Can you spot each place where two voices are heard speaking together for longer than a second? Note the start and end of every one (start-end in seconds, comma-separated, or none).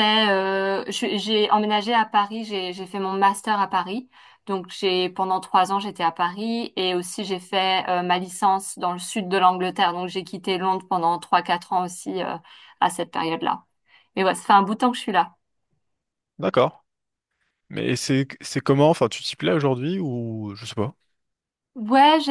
none